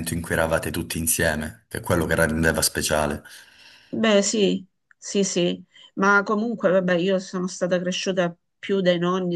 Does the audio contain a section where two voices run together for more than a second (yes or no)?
no